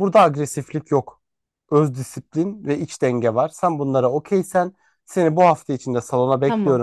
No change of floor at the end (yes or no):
yes